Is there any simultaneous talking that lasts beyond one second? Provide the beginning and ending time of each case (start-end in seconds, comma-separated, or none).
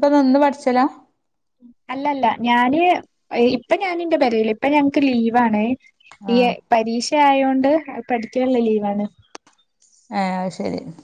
none